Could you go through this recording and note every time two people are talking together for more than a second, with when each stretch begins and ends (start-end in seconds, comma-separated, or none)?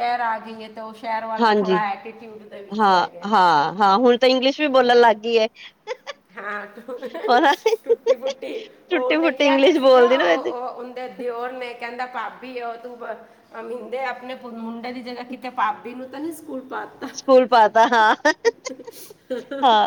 8.9-10.6